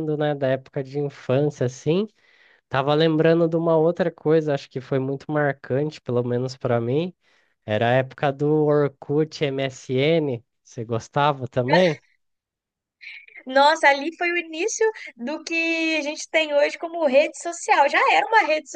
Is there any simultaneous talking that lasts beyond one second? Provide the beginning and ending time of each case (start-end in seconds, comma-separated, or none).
none